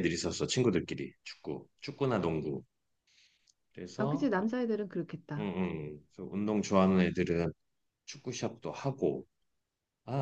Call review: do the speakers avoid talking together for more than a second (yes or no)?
yes